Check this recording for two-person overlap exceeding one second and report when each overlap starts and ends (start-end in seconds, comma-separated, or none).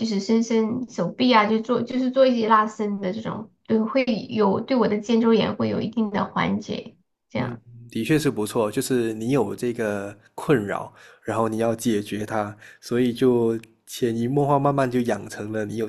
none